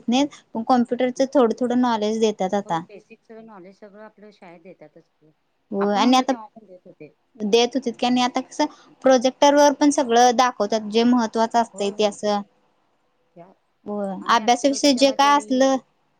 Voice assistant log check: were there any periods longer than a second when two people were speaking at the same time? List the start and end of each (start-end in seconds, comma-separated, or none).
14.2-15.6